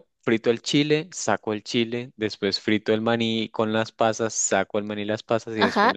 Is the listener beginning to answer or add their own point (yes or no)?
yes